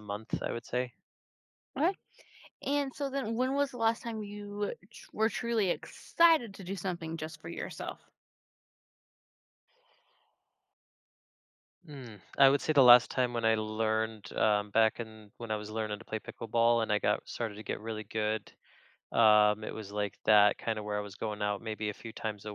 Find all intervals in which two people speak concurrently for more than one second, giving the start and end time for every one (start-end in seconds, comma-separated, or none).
none